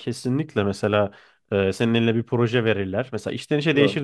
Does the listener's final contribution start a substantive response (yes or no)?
no